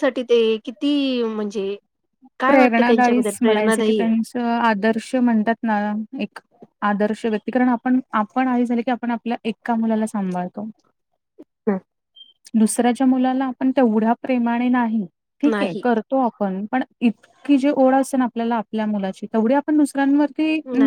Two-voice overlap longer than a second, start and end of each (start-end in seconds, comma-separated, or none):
2.5-4.0